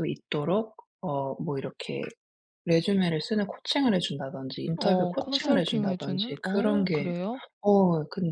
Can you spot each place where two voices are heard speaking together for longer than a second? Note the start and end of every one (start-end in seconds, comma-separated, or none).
4.8-7.1